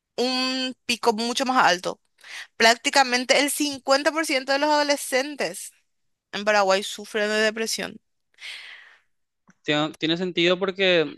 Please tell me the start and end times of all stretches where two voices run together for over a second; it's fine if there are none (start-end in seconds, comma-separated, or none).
none